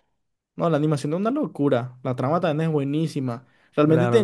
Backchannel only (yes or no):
yes